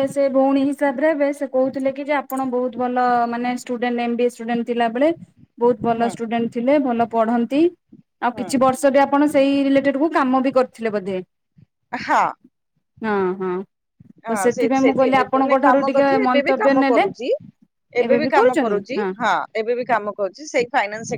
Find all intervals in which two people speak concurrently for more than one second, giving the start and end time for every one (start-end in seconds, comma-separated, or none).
14.3-17.0